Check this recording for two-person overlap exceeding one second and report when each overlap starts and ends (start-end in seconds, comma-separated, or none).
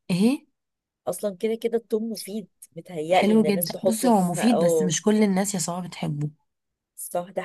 3.1-5.0